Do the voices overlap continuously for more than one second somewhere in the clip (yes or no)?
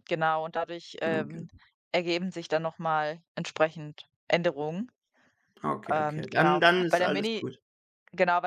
yes